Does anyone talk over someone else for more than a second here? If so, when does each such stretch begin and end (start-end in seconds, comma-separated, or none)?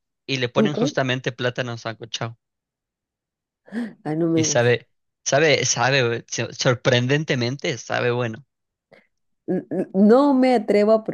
none